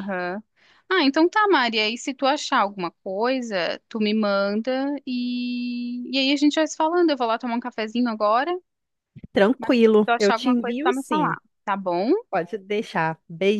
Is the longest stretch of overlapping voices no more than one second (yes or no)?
no